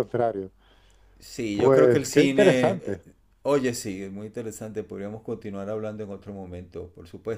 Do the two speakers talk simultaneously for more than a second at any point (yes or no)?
yes